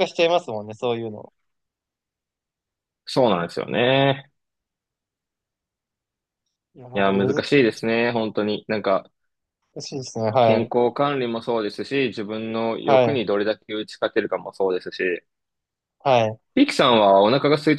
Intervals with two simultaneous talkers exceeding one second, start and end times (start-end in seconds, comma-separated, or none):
none